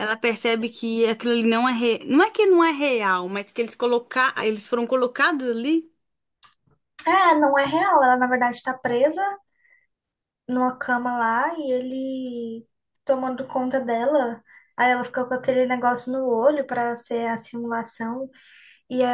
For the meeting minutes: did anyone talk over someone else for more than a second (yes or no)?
no